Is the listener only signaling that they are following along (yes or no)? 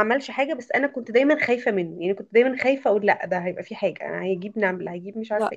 no